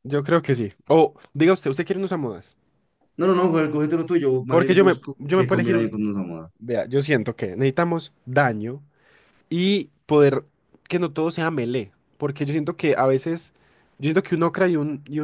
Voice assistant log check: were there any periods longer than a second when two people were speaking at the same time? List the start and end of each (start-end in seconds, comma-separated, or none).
4.5-6.0